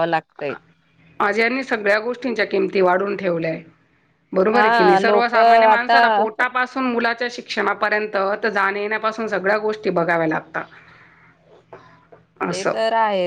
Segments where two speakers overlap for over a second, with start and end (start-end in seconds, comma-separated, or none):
4.5-6.0